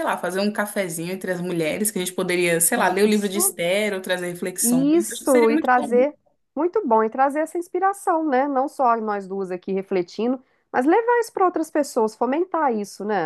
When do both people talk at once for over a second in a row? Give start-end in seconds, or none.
4.6-5.9